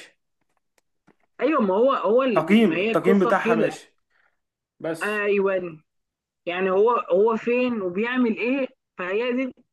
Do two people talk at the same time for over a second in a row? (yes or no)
yes